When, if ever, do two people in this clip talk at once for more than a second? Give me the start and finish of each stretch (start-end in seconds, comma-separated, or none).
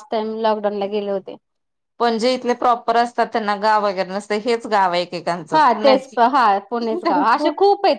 none